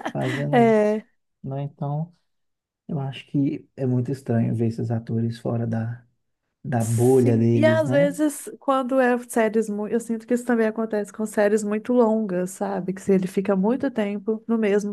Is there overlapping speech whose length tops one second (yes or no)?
yes